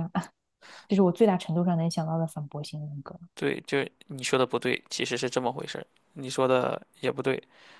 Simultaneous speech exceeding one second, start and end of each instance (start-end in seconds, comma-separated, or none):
none